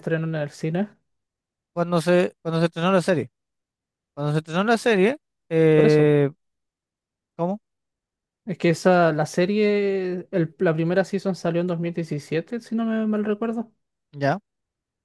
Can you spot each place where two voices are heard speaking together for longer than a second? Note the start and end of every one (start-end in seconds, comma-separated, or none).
none